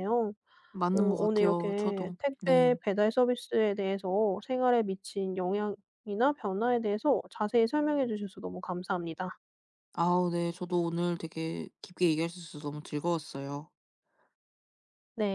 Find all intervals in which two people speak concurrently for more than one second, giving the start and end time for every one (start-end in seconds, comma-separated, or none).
0.9-2.7